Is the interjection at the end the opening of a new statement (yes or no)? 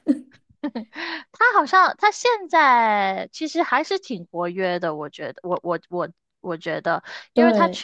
no